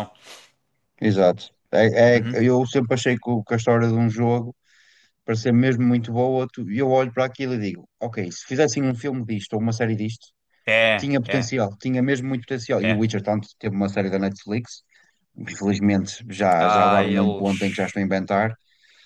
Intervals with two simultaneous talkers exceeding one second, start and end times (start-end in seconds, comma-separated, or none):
16.6-18.0